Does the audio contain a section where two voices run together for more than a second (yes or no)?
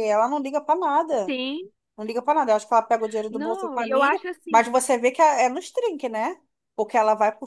yes